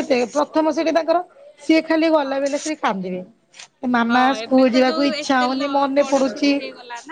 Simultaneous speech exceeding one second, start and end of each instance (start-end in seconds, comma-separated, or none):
4.1-6.5